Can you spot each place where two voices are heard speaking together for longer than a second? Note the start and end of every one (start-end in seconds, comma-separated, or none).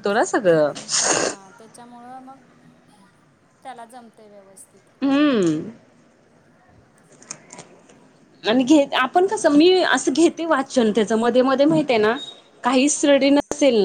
none